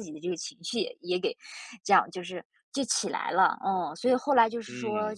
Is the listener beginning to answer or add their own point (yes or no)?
no